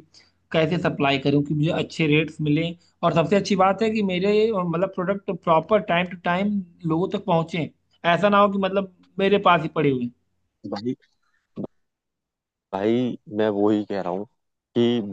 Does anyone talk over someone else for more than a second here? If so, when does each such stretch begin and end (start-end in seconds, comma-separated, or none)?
none